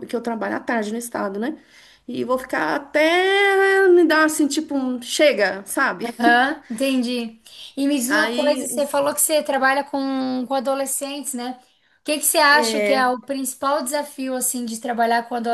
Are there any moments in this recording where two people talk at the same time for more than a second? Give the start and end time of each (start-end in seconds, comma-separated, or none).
none